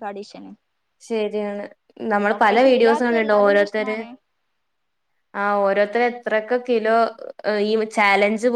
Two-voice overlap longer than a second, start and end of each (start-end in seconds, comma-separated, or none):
2.6-4.0